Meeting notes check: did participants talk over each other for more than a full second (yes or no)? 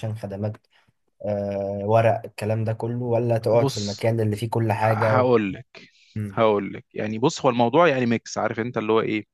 no